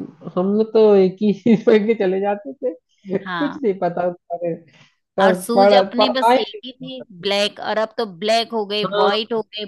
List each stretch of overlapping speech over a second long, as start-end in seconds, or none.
5.2-7.2